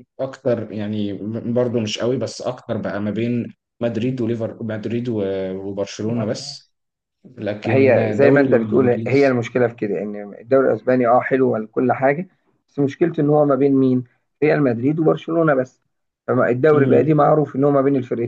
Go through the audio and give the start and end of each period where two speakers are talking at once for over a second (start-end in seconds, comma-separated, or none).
7.6-9.4